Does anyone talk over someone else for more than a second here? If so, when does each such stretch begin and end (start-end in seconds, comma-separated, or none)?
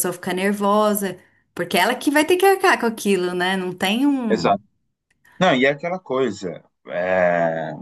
none